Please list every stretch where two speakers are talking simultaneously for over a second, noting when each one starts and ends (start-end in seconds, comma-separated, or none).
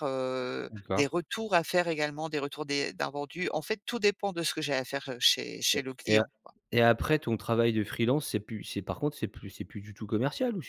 none